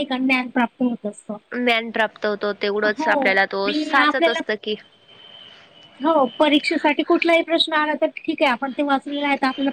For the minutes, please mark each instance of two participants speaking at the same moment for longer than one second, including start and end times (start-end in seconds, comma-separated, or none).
2.9-4.4